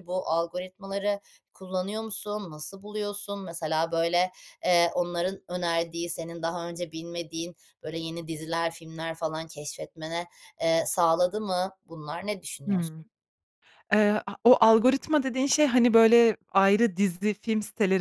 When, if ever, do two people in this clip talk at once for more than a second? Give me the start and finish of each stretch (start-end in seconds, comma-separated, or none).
none